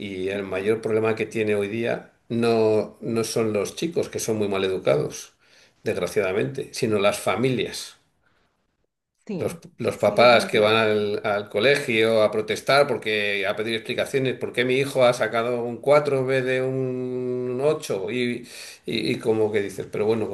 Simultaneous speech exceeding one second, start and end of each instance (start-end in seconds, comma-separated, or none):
9.4-10.9